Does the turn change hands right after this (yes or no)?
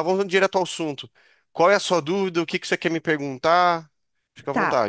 yes